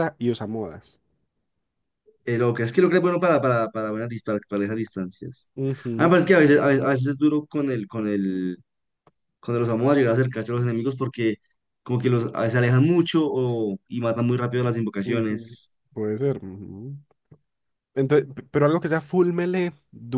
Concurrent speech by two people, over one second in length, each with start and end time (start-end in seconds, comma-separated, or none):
none